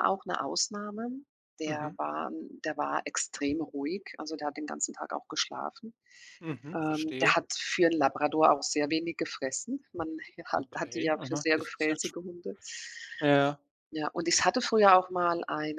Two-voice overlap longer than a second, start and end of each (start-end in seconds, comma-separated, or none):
10.6-12.1